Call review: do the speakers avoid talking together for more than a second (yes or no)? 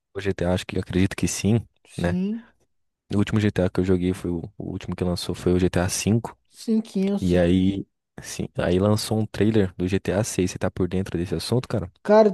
yes